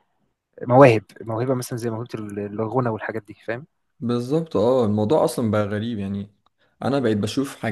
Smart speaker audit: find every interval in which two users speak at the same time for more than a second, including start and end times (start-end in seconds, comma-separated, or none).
none